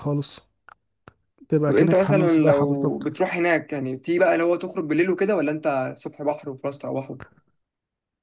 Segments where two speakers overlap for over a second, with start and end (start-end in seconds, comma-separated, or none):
1.7-3.1